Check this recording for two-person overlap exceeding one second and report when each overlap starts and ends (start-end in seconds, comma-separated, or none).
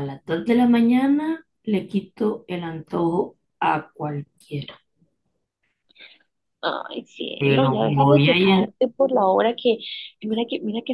7.4-8.7